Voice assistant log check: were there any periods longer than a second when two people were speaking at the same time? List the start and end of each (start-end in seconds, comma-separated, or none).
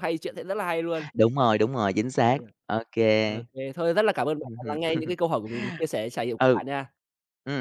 none